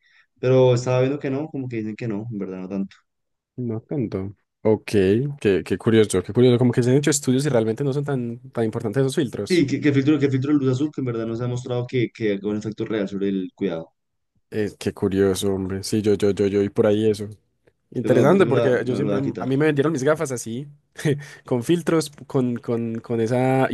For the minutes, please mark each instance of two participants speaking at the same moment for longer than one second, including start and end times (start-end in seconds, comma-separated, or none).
18.0-19.5